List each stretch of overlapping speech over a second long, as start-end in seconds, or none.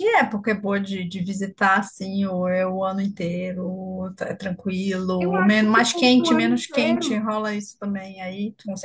5.2-7.2